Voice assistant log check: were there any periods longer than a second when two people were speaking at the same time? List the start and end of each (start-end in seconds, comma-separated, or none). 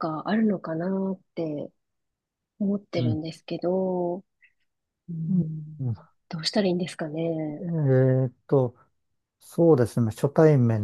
none